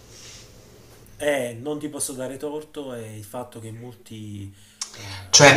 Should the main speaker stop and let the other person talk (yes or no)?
yes